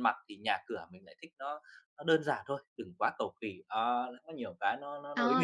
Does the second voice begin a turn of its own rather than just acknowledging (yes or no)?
yes